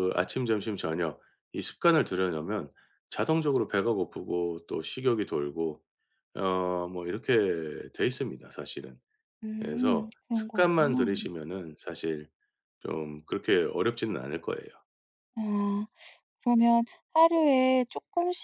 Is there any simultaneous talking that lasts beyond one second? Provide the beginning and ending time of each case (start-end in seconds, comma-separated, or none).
9.6-11.2